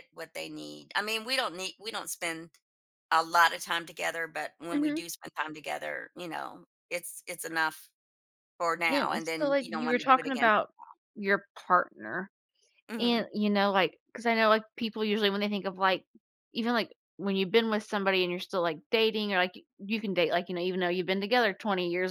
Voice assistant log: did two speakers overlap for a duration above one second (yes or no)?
yes